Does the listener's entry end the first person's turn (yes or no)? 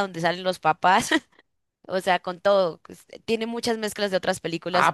yes